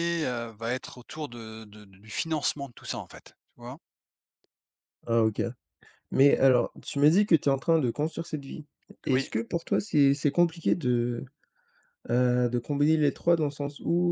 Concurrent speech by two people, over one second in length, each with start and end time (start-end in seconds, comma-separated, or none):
none